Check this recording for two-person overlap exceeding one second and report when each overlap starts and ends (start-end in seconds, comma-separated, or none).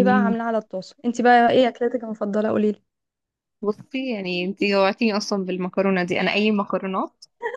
none